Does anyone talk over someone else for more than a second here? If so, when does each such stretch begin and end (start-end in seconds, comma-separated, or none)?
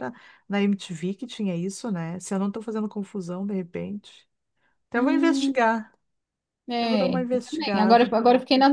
6.8-8.1